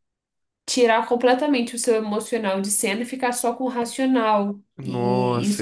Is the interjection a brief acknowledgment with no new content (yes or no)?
no